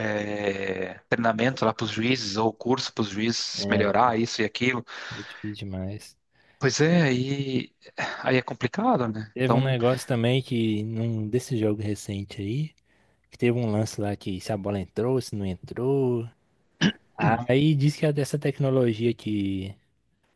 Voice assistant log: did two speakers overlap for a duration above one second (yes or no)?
no